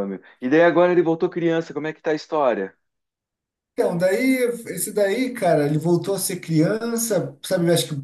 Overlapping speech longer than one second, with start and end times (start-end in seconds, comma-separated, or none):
none